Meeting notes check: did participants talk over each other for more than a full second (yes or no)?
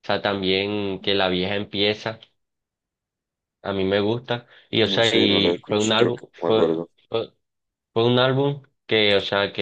yes